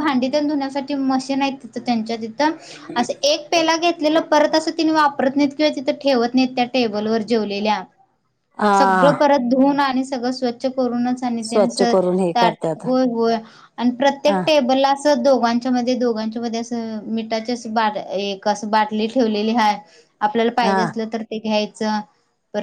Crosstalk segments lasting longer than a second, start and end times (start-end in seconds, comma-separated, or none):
11.5-12.8